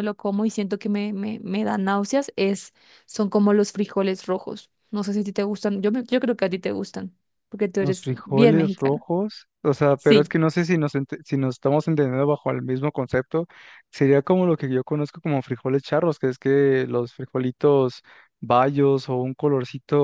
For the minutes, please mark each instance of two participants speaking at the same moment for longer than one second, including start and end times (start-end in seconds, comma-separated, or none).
7.8-9.0